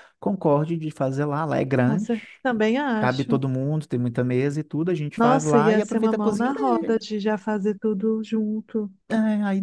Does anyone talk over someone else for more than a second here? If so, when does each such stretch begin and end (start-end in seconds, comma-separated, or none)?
5.2-7.0